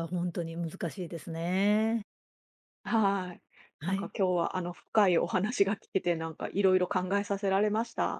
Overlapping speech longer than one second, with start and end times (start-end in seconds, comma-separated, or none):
none